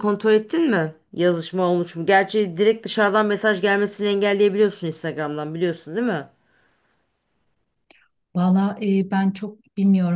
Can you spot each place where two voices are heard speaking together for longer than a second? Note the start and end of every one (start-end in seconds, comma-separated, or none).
none